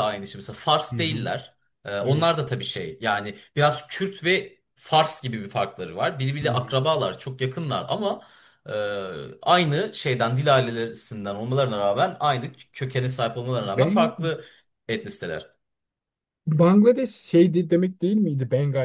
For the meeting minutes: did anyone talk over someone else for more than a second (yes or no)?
no